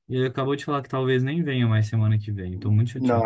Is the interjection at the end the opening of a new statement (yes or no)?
yes